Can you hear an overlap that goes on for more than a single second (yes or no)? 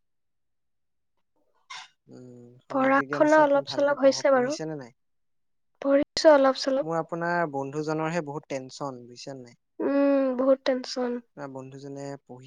yes